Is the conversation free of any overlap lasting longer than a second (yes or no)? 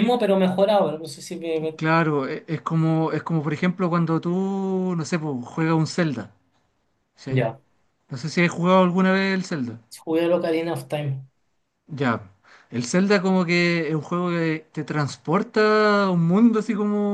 yes